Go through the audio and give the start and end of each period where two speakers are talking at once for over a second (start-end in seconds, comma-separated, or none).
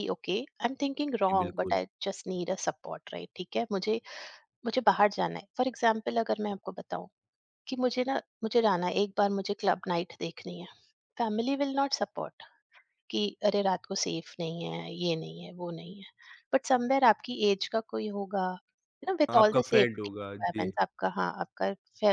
19.3-20.6